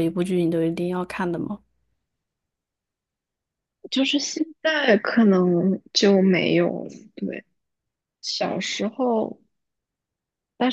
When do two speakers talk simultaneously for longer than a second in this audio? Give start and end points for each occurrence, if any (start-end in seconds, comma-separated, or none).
none